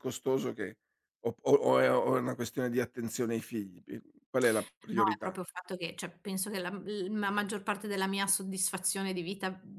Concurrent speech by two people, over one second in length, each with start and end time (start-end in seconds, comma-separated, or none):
none